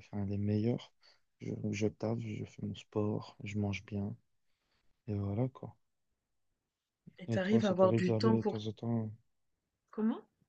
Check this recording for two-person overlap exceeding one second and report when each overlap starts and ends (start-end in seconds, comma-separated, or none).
7.3-8.6